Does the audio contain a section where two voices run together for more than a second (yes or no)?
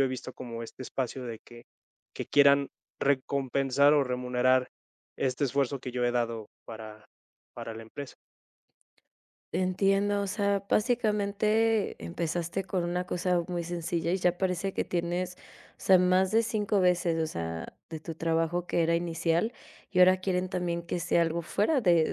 no